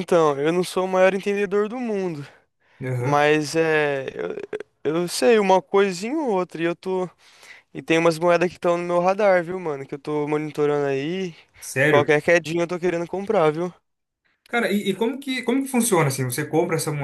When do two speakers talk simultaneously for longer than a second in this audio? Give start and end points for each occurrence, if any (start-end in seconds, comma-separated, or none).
none